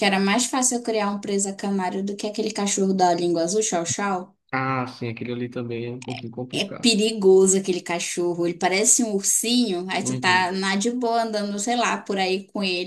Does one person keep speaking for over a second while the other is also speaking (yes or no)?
no